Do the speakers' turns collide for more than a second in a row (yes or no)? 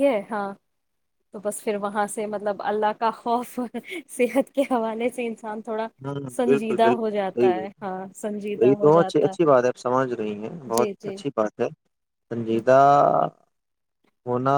yes